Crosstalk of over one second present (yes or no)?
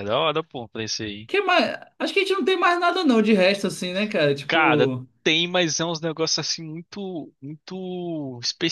no